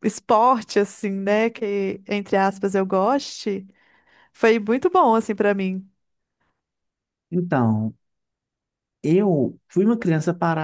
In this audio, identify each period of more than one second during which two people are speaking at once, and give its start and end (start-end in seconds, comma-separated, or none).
none